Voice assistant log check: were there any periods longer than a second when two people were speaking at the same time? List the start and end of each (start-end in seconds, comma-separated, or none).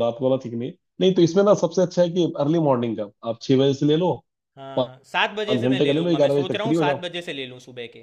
5.5-7.0